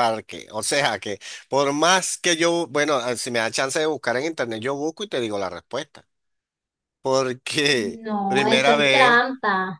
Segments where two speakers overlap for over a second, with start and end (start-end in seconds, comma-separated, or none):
7.7-9.2